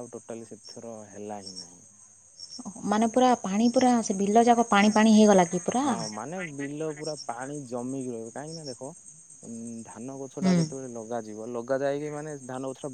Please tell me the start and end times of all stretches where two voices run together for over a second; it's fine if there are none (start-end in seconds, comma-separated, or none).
none